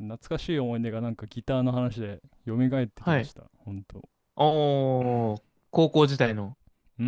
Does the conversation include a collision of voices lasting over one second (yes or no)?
no